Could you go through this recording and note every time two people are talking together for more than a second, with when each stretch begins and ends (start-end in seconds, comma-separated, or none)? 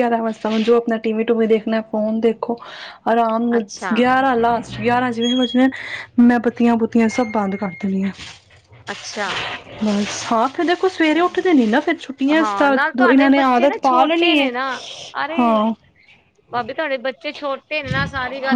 12.4-14.5